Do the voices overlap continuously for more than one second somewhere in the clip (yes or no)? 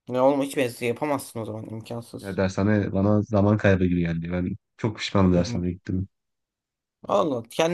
no